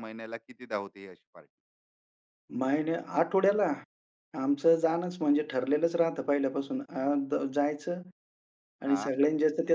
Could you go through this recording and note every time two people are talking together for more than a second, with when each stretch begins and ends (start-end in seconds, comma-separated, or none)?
none